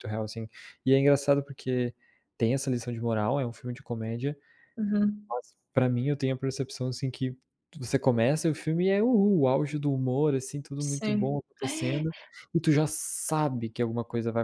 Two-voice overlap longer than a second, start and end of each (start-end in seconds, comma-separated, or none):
10.8-12.1